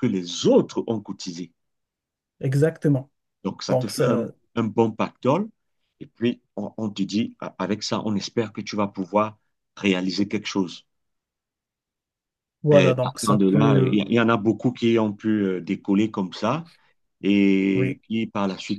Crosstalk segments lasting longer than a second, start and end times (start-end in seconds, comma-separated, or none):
12.7-14.0